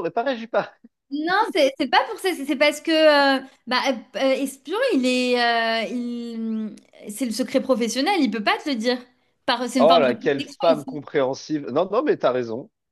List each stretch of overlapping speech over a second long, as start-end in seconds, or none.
9.8-11.0